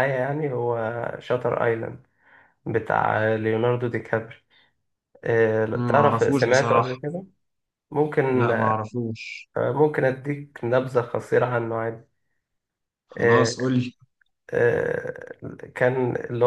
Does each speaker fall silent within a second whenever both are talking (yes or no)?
no